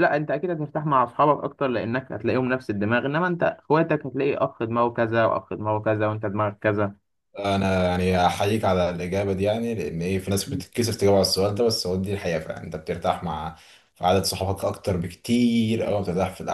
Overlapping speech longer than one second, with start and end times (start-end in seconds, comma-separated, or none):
none